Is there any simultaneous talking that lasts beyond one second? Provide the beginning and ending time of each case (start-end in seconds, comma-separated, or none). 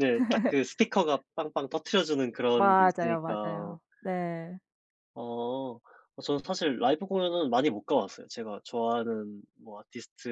2.5-3.8